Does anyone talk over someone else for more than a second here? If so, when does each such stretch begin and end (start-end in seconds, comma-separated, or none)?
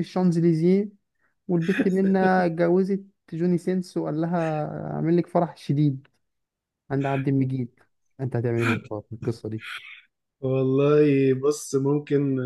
none